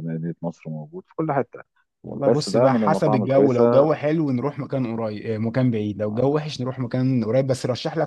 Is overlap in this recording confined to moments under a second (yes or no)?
no